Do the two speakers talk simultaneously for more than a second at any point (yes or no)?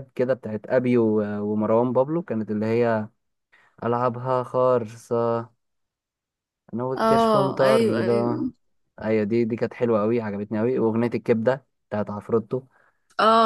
yes